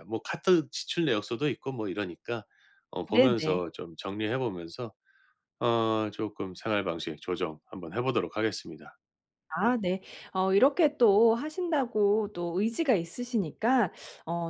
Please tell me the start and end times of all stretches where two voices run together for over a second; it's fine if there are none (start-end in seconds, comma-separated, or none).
none